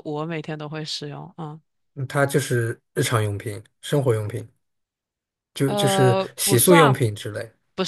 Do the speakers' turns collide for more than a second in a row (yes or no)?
yes